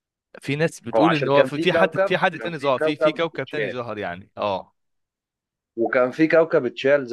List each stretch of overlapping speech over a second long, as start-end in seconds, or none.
0.9-3.8